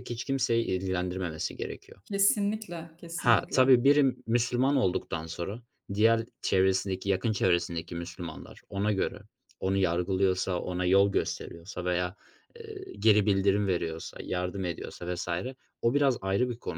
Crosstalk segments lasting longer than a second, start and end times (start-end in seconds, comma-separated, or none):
none